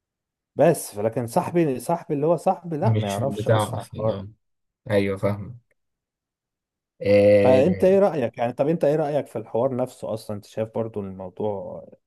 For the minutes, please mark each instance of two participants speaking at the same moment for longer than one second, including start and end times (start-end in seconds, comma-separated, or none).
2.8-4.2